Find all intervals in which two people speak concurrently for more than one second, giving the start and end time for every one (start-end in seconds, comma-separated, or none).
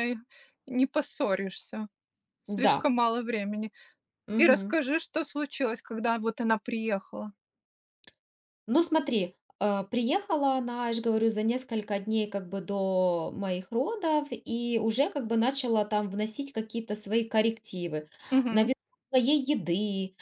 none